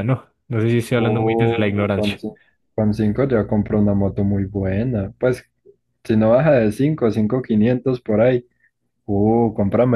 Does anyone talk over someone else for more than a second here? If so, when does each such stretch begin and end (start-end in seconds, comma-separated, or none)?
0.9-2.2